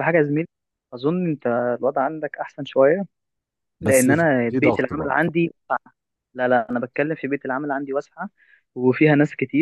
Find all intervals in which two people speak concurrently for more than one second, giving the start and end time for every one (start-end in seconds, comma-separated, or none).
3.8-5.3